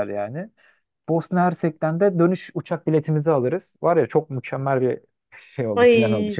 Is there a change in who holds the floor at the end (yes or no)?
yes